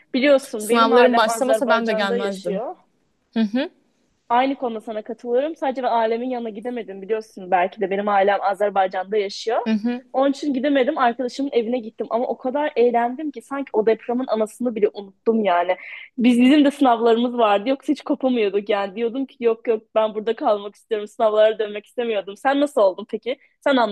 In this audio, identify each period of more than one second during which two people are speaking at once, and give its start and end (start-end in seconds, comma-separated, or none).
0.6-2.6